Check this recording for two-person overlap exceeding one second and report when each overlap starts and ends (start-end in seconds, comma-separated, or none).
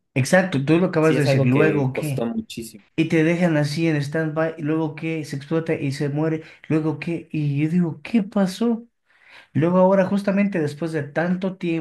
1.0-2.3